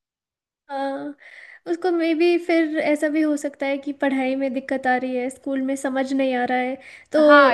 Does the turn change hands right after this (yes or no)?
yes